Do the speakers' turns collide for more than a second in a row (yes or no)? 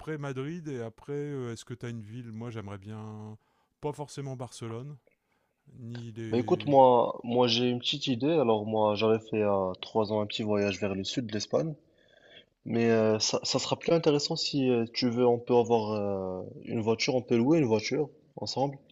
no